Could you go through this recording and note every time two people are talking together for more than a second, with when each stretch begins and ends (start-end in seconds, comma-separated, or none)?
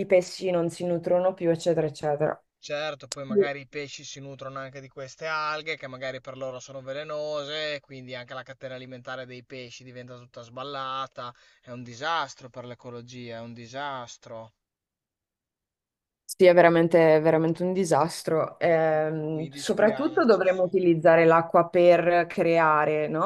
19.3-20.6